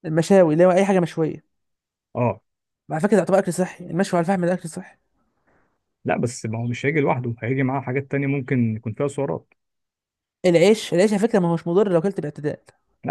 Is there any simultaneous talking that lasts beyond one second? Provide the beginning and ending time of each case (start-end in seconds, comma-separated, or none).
none